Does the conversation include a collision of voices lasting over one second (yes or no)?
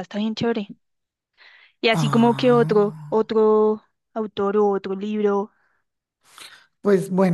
yes